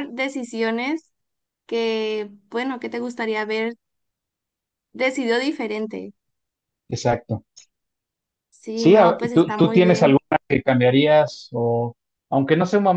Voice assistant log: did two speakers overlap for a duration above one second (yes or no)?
yes